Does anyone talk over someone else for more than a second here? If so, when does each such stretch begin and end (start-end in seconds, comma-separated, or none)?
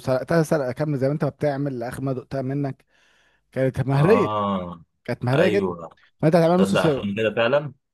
none